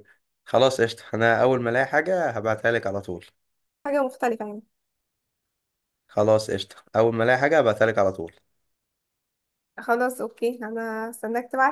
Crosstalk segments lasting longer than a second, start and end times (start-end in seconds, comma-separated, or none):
none